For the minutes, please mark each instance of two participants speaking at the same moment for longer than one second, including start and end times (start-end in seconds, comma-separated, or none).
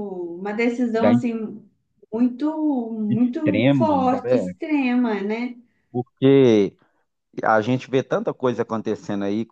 3.1-4.5